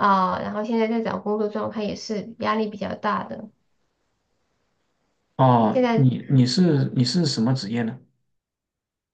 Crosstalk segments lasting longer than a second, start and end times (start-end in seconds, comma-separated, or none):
none